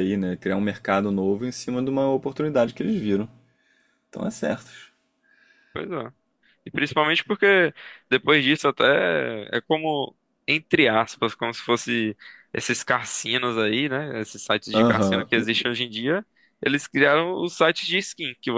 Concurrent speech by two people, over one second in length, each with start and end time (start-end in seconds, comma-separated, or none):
none